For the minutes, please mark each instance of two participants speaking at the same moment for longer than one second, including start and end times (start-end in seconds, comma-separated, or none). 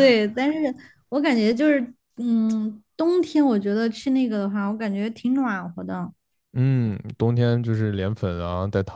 none